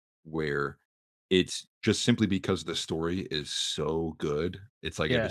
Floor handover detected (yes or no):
no